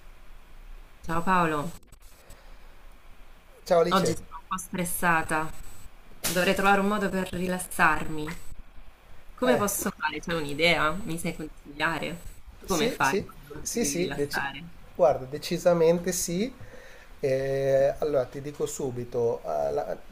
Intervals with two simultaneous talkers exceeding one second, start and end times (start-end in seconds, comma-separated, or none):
12.7-14.4